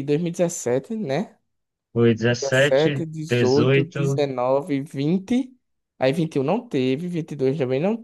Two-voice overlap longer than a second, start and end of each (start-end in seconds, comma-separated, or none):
2.4-4.2